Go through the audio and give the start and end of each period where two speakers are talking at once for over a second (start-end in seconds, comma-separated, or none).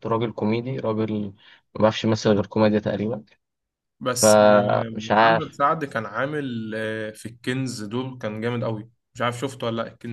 4.1-5.6